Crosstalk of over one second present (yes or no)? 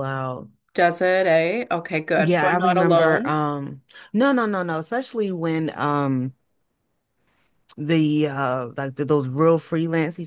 yes